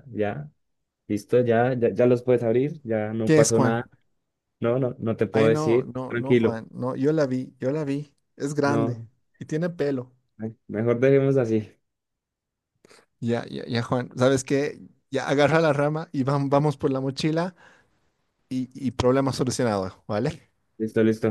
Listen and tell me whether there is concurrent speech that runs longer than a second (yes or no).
yes